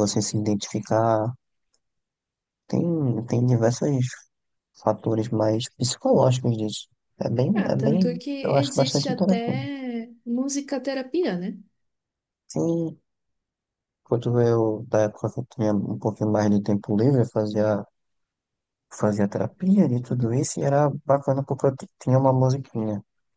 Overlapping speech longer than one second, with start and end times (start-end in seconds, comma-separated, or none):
7.6-9.7